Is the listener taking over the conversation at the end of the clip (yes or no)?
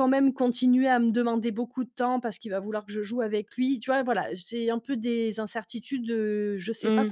no